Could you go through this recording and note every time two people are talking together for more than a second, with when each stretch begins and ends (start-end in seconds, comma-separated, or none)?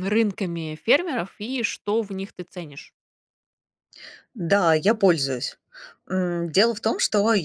none